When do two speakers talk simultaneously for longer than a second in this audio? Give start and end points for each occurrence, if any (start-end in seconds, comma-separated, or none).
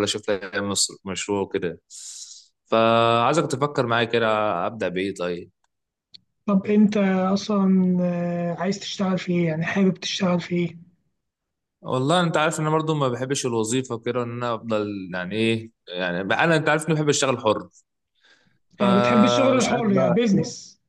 18.8-20.2